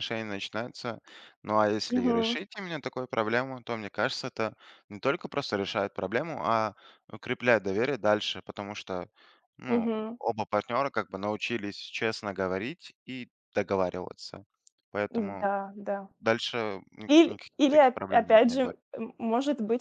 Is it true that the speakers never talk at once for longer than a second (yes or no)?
no